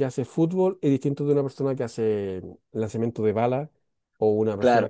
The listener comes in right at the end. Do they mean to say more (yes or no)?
yes